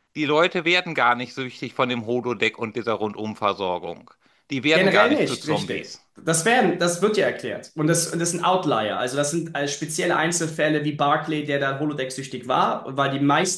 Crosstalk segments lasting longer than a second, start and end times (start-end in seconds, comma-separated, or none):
4.7-6.0